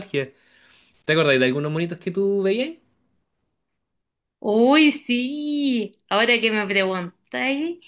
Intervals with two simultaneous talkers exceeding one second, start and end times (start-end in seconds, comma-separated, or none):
none